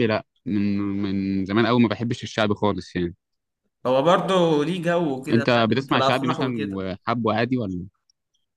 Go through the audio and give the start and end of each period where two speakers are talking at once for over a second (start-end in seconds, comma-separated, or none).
5.3-6.8